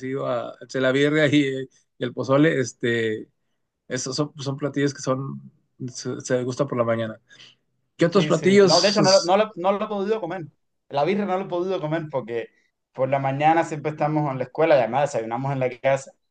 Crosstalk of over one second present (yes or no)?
yes